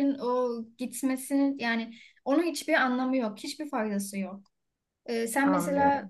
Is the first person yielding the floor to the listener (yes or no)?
no